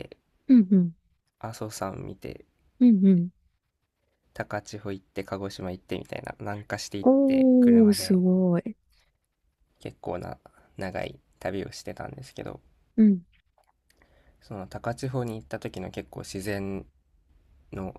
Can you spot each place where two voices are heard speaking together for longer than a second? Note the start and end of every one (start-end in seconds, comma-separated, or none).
7.0-8.2